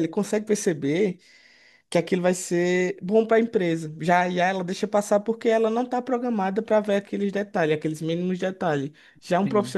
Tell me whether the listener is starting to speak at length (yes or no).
no